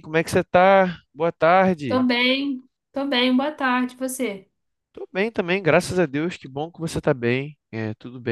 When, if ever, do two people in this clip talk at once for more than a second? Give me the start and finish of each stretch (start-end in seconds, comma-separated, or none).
none